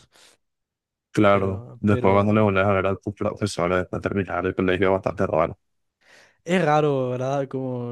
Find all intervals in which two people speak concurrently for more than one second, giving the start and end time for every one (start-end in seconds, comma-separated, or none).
1.3-2.5